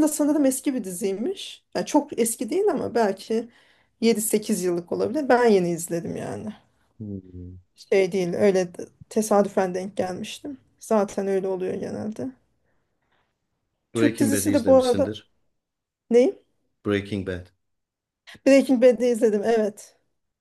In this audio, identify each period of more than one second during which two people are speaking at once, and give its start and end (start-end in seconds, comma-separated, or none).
13.9-15.2